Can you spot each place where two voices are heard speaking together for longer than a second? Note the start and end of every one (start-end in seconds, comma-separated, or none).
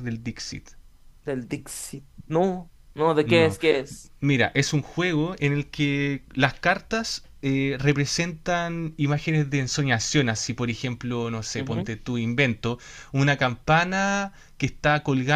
none